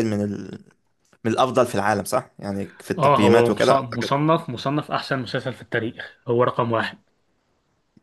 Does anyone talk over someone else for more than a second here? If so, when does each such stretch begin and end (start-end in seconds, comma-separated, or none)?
3.0-4.2